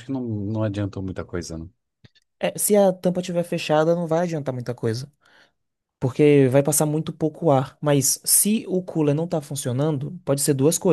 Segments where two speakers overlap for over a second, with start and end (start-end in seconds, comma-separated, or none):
none